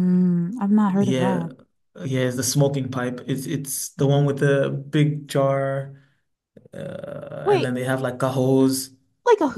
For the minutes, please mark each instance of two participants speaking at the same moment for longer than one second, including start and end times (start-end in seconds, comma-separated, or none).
none